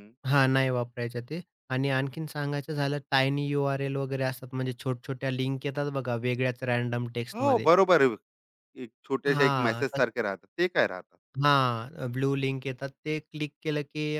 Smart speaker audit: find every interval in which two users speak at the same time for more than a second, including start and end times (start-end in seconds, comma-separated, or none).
none